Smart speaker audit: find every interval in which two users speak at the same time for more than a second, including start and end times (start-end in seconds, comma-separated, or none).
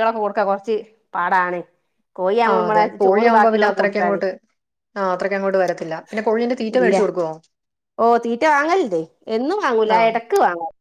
2.5-4.2